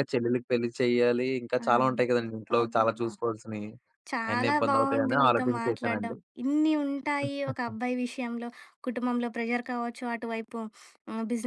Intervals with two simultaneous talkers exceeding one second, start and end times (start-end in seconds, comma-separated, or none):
4.3-6.2